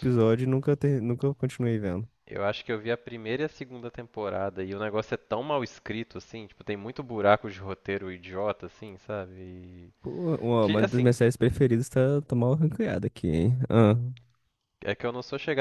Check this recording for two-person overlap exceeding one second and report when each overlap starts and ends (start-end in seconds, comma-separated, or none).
none